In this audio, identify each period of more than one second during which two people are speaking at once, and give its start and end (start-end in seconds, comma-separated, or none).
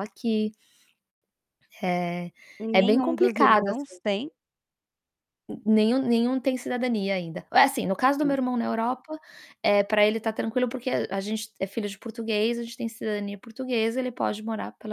2.7-4.0